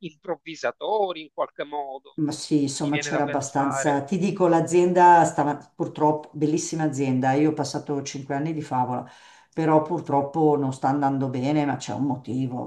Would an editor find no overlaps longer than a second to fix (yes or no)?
no